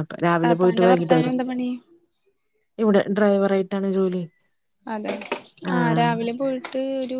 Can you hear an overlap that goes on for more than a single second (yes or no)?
no